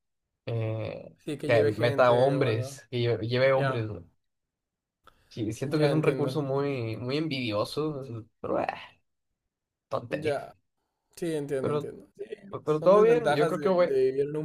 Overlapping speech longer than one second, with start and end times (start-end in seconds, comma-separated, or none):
1.2-2.7, 12.6-13.9